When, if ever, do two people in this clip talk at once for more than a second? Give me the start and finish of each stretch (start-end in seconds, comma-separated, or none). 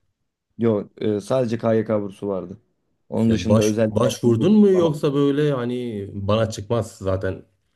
3.3-4.9